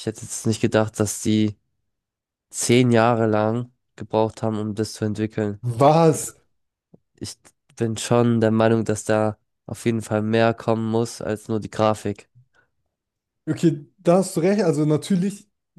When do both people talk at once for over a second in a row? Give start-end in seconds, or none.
none